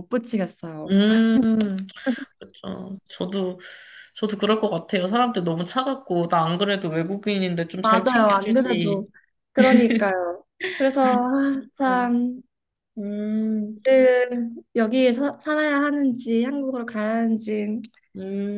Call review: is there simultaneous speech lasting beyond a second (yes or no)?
yes